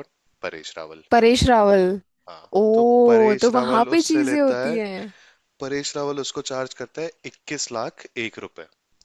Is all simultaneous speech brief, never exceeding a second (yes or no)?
no